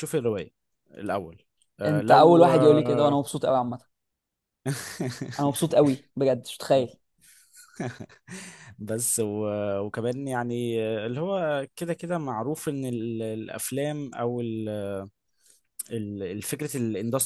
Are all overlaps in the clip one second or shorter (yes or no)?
no